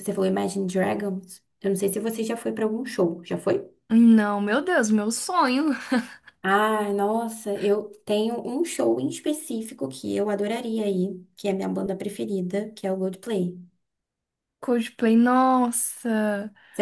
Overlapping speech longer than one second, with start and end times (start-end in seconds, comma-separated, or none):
none